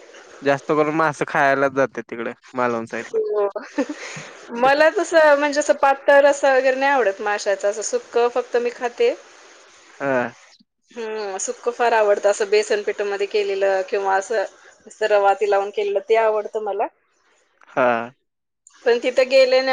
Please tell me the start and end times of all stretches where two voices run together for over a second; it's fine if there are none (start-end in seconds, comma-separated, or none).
none